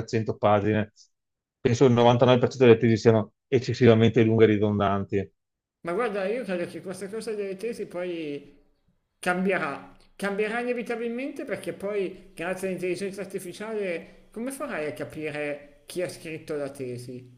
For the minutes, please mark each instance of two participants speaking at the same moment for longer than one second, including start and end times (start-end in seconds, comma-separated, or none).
none